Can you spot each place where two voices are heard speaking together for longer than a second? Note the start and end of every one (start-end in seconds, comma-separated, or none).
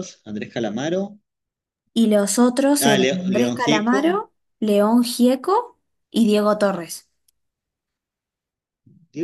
2.8-4.2